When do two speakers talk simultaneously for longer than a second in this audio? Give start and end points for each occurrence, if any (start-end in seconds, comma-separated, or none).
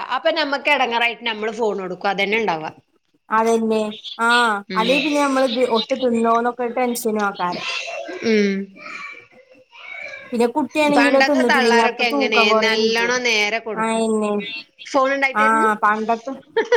11.0-13.1